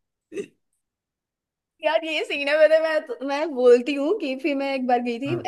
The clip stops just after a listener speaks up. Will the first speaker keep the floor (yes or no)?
yes